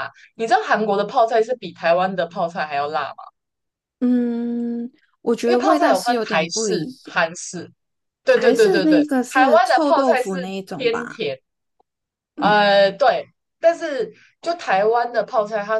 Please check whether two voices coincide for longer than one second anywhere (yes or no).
yes